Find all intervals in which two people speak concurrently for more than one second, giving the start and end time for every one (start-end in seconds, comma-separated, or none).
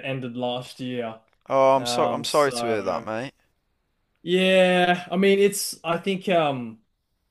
1.8-3.1